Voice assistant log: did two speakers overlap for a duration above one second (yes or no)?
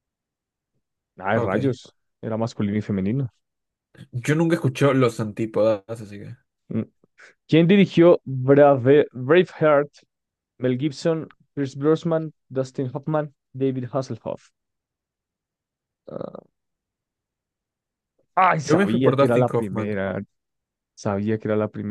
yes